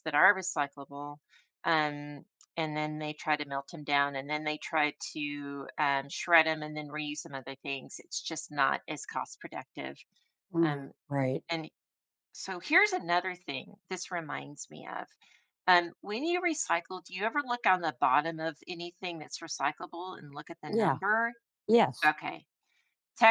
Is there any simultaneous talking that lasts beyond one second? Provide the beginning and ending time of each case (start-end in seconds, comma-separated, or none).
none